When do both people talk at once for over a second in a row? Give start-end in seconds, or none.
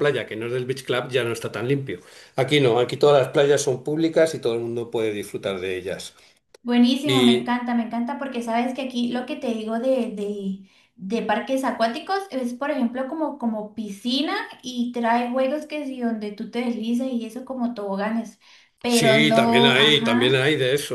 18.9-20.4